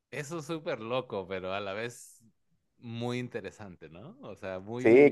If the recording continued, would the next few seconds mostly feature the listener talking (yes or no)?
yes